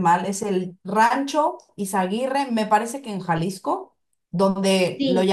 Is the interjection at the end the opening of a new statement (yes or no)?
no